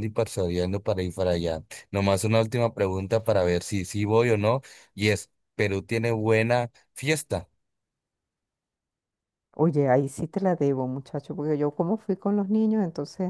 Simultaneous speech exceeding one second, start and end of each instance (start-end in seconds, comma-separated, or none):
none